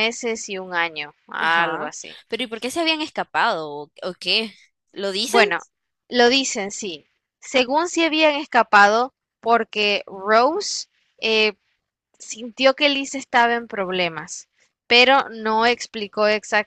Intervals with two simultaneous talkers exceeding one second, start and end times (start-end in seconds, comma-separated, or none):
none